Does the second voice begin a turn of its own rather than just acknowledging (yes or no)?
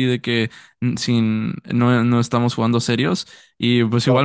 no